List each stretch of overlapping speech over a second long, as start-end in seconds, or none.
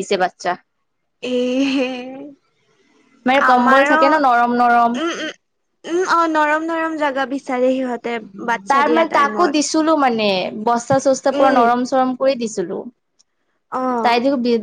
3.5-4.9